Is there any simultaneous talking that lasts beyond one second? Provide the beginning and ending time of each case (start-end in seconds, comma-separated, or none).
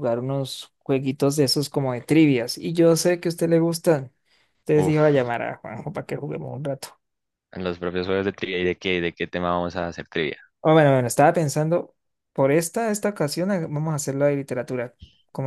none